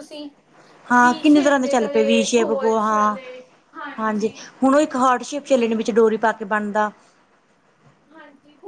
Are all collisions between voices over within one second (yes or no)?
no